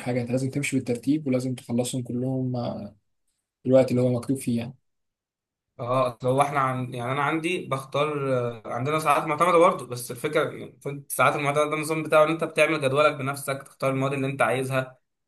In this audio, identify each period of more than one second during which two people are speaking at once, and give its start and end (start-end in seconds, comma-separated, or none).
none